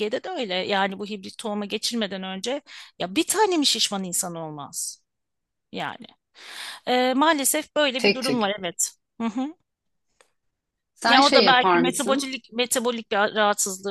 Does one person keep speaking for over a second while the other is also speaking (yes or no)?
yes